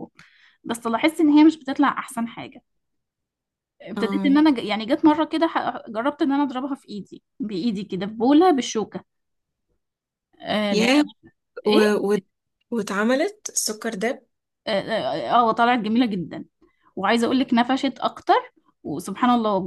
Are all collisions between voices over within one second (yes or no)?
yes